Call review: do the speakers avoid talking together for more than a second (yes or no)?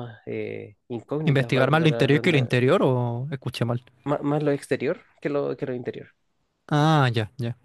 no